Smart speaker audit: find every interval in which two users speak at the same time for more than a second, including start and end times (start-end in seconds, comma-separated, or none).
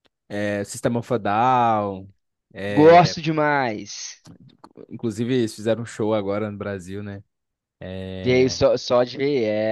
none